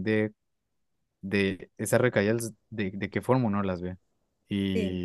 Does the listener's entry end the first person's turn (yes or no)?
no